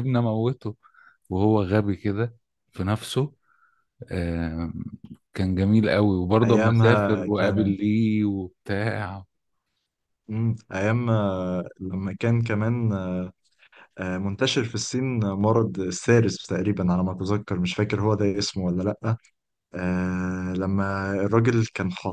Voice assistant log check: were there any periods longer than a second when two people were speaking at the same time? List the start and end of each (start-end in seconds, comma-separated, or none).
6.4-7.7